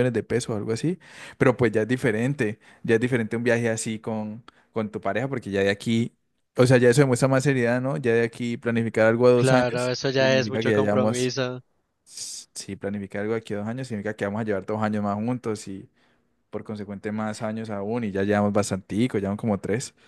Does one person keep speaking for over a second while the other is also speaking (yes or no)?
yes